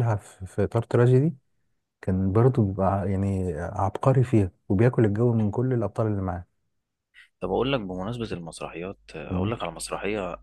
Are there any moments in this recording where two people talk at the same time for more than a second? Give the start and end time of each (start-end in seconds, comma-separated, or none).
none